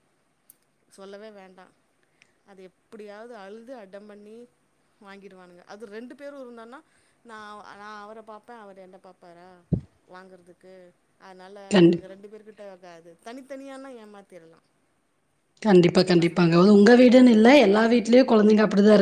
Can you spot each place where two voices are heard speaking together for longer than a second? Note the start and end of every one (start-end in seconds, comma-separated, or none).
none